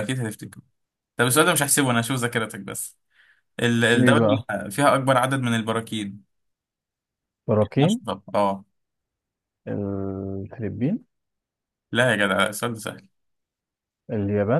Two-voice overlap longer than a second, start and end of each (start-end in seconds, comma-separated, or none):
none